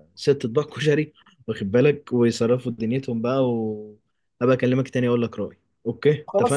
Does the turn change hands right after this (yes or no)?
yes